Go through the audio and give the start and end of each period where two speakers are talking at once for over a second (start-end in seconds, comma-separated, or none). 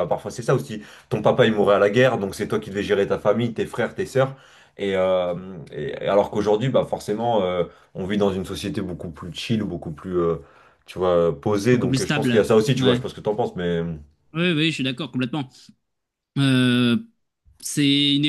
11.7-13.0